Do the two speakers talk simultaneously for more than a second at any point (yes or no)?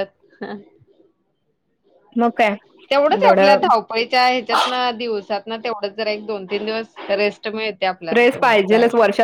no